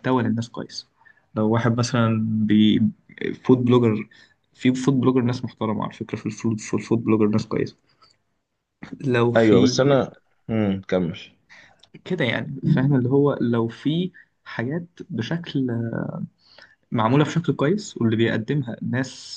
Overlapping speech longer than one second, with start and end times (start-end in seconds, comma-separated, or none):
none